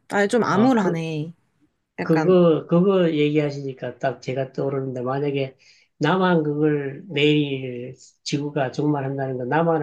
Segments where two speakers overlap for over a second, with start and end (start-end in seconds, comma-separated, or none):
none